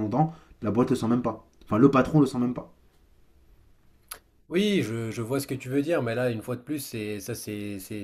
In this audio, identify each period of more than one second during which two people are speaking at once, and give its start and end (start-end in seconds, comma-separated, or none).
none